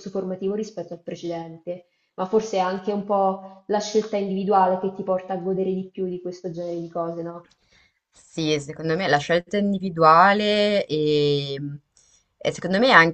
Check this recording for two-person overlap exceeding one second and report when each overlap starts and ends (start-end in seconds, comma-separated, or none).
none